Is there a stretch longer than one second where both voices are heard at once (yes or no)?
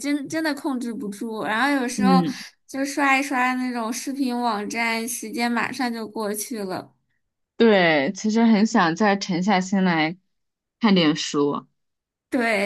no